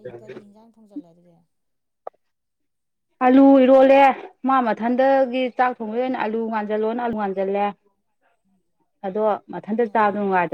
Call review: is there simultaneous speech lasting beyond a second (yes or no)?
no